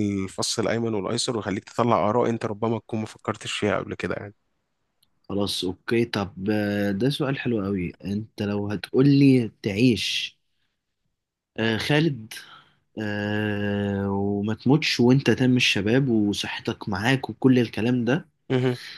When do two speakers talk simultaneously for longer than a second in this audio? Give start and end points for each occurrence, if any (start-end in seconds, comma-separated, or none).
none